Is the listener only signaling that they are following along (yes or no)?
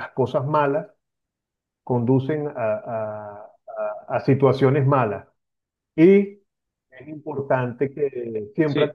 yes